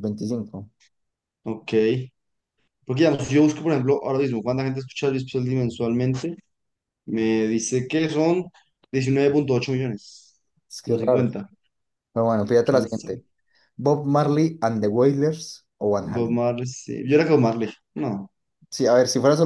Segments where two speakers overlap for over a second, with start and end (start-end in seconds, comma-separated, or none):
none